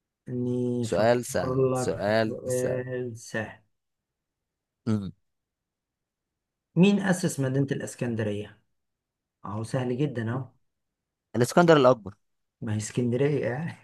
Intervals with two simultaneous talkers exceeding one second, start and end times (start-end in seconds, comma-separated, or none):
0.8-2.8